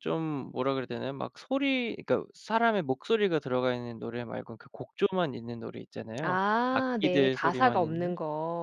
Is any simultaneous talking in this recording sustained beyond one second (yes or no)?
yes